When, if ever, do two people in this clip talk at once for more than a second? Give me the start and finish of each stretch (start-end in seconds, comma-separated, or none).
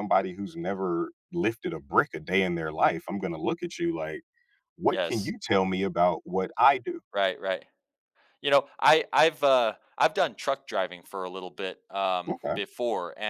none